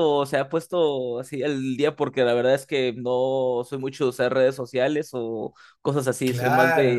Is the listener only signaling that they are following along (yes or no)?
no